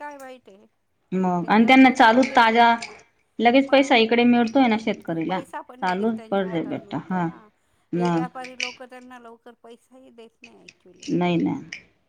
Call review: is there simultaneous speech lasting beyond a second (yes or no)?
yes